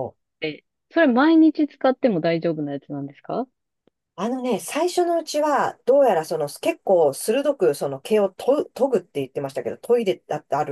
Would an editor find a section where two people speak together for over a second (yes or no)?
no